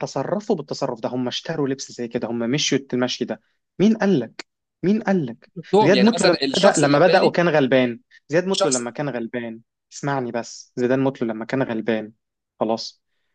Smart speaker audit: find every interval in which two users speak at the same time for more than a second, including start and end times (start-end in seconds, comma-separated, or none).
5.6-7.3